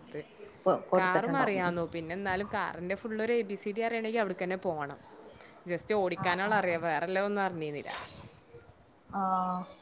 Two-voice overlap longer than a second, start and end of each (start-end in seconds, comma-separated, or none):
none